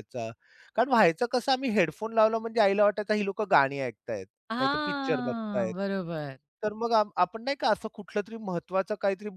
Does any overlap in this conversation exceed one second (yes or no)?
yes